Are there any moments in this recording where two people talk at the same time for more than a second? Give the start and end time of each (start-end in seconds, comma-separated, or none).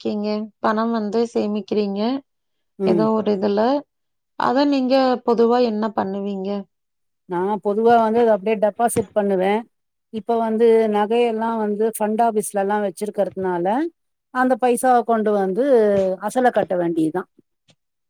none